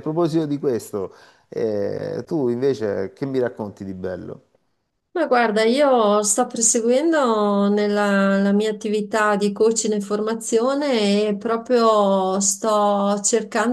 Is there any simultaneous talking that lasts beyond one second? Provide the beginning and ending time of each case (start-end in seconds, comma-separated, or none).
none